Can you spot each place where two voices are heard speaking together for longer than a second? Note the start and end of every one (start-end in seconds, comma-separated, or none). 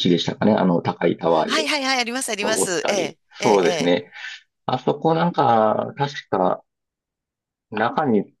2.4-4.0